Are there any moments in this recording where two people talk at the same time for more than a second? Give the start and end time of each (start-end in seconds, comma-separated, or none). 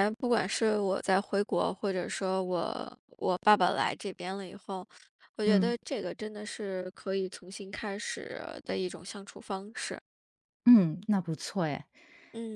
none